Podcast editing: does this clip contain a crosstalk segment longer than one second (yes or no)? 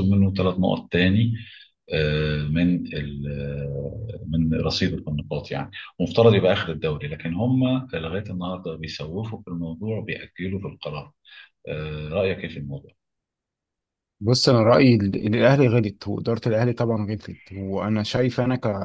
no